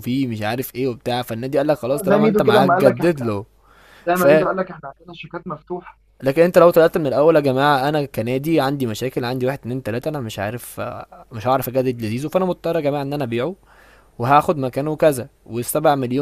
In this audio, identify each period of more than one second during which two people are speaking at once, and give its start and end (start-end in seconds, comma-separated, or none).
1.9-3.3